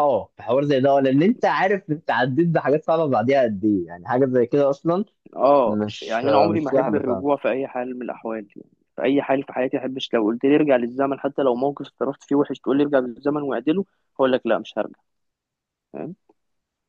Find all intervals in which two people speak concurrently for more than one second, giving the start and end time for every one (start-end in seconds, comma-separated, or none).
5.7-7.2